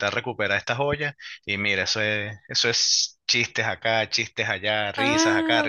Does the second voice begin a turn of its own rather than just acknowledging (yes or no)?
yes